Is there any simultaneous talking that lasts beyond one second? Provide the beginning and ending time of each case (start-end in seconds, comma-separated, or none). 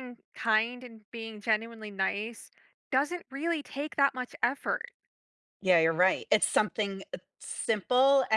none